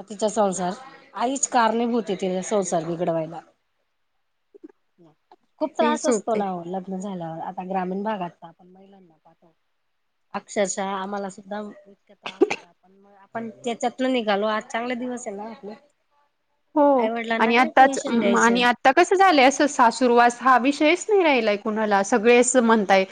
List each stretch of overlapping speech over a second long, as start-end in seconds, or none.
17.4-18.6